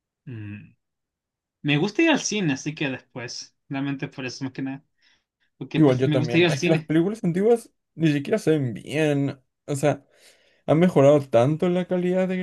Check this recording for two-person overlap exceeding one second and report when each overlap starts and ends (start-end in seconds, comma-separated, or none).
5.7-6.9